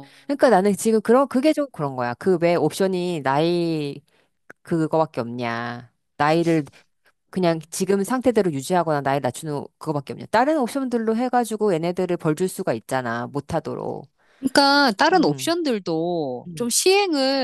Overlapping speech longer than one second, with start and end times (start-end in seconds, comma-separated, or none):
none